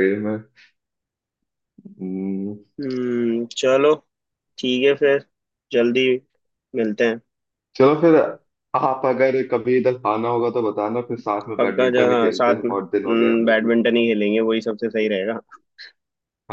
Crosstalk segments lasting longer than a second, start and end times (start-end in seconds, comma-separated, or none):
11.6-13.7